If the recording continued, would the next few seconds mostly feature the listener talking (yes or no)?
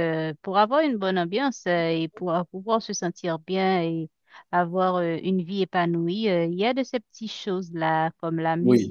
no